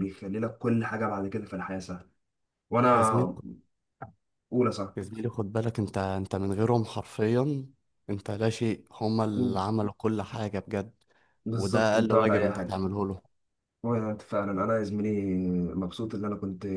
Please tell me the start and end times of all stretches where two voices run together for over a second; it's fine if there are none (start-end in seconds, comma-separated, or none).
11.5-12.8